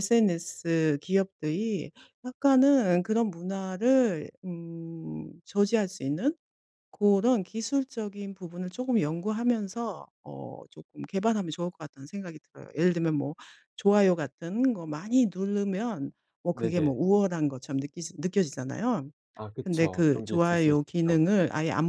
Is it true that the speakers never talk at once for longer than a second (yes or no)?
no